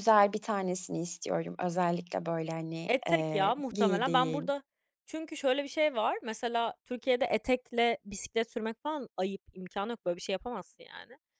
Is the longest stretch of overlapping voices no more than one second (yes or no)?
no